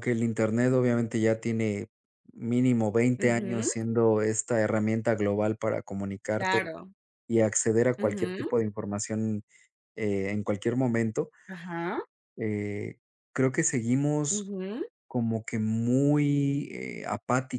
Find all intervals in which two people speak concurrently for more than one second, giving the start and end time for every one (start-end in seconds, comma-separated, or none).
none